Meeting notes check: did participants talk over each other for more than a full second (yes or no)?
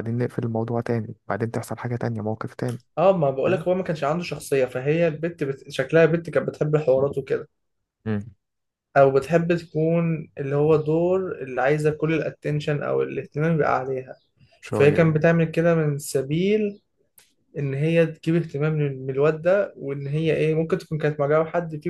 no